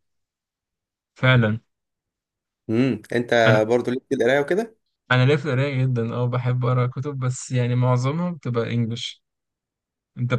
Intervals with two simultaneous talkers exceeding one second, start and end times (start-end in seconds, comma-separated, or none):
none